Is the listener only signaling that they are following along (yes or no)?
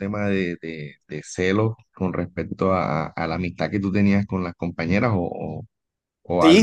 no